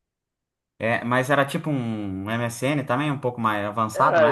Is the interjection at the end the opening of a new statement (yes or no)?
yes